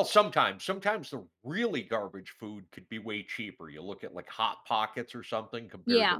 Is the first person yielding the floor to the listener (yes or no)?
no